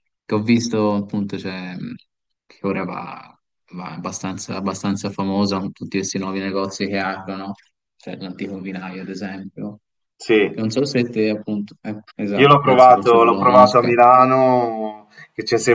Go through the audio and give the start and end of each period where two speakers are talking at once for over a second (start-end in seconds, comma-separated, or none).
12.4-13.9